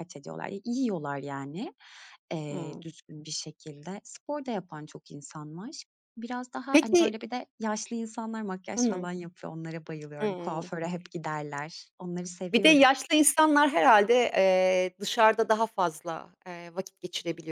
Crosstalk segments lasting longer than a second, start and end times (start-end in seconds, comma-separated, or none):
none